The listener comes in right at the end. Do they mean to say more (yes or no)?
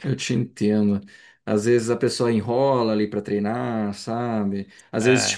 no